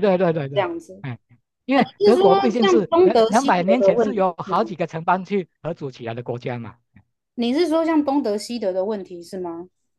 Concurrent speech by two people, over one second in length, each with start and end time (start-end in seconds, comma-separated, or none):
1.7-4.7